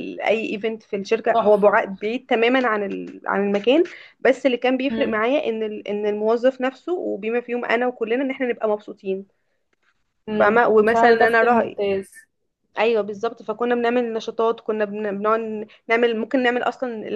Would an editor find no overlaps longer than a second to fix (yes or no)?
no